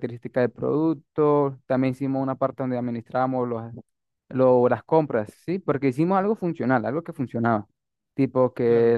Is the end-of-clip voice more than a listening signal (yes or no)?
no